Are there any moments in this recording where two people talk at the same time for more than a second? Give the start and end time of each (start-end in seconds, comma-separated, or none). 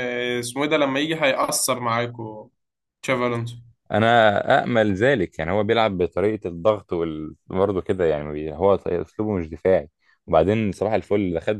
none